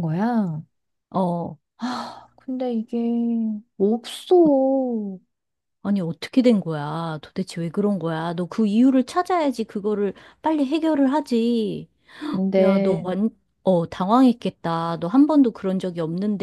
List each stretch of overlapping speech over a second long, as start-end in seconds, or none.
none